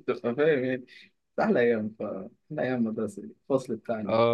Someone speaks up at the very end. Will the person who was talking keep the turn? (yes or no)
yes